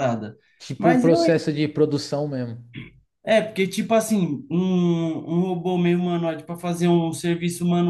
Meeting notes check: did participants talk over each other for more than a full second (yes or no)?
no